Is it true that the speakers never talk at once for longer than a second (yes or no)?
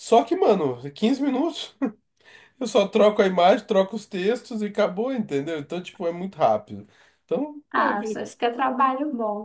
yes